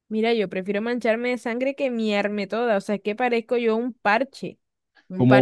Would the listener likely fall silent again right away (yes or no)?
no